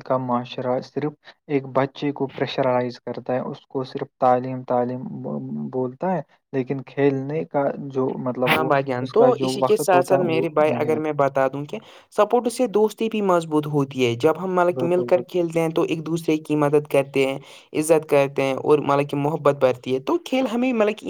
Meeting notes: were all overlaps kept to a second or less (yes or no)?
no